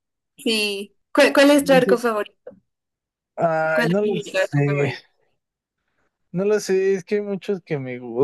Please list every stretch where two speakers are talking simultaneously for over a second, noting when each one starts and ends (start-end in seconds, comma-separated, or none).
3.7-4.9